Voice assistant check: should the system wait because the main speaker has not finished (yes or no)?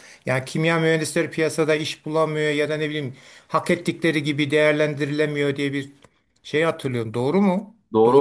no